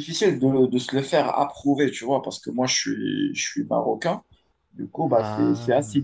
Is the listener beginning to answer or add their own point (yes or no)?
no